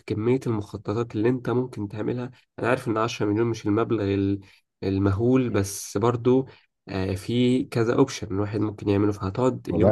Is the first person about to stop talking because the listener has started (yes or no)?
yes